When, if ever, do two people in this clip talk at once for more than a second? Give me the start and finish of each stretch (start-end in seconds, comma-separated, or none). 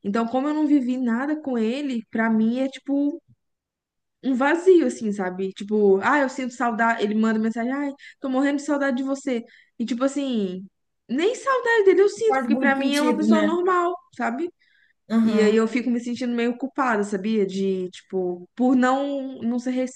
12.3-13.6